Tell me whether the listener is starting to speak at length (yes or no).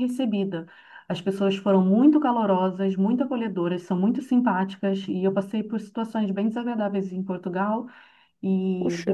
no